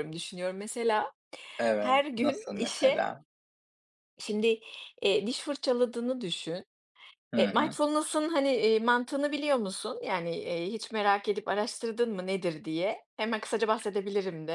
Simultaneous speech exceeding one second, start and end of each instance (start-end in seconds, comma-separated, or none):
1.8-3.1